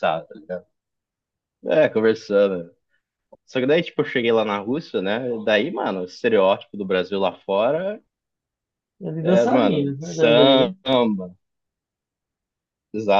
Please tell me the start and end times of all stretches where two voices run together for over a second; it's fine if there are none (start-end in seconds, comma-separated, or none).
9.2-10.7